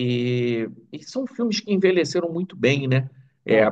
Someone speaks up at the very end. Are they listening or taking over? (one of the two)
listening